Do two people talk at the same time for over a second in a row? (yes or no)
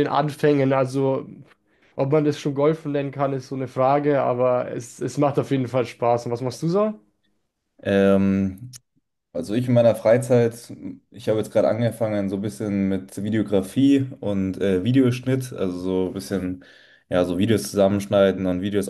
no